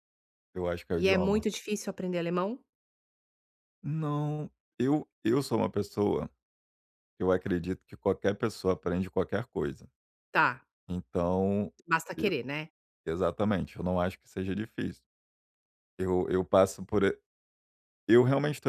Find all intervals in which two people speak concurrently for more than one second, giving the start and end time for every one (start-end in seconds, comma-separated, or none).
none